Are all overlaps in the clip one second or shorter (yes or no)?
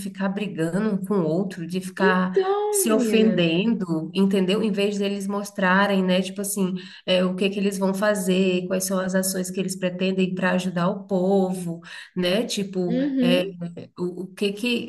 no